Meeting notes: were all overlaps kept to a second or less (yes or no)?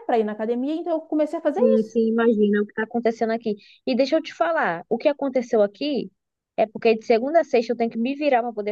yes